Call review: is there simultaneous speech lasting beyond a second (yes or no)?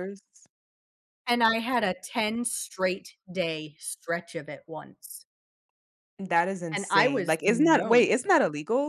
yes